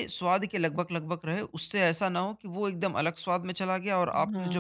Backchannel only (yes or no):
no